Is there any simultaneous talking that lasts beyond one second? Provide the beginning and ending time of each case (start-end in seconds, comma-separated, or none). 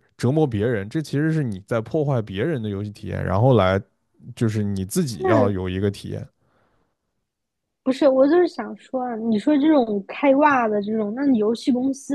none